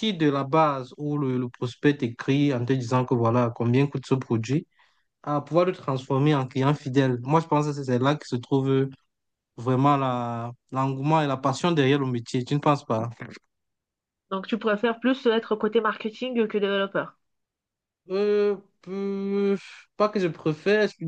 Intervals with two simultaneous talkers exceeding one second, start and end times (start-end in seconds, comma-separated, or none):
none